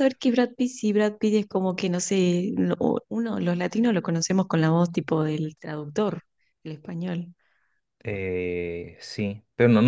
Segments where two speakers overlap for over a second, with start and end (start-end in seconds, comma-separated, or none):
none